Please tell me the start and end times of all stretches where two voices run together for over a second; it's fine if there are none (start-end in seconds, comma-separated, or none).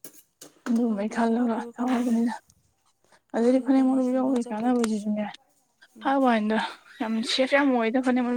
0.9-2.2, 3.3-4.9